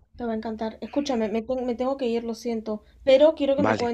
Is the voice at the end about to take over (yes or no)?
no